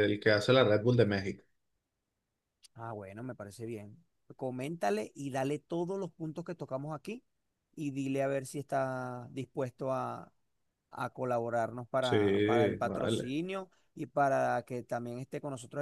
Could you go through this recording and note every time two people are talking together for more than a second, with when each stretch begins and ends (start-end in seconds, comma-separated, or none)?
12.0-13.3